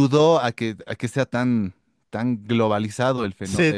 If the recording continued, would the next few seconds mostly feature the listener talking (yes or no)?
yes